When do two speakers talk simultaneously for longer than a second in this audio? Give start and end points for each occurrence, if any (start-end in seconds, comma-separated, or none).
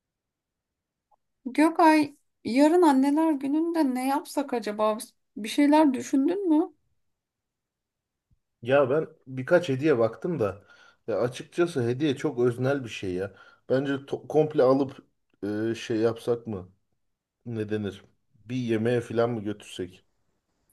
none